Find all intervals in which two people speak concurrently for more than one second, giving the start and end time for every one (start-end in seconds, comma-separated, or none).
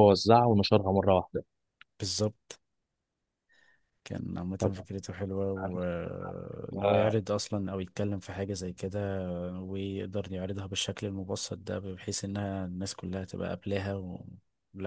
none